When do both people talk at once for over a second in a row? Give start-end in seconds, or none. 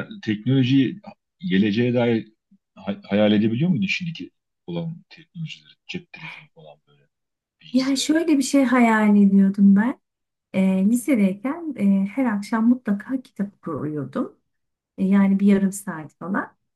none